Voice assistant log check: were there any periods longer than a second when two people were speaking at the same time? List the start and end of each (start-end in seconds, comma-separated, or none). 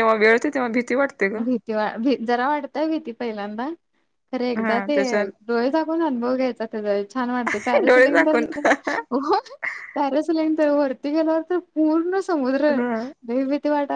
none